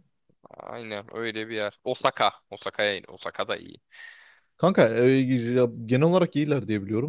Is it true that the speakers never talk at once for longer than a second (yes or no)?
yes